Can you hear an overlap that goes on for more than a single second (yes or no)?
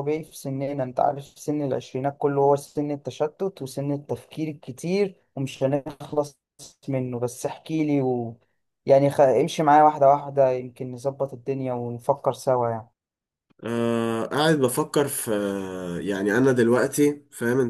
no